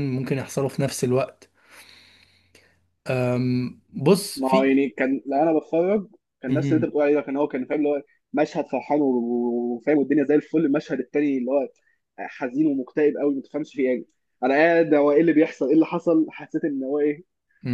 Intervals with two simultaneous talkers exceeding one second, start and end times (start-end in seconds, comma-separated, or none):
none